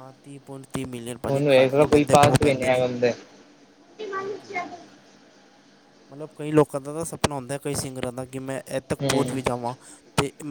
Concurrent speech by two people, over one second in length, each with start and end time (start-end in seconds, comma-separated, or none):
1.3-2.8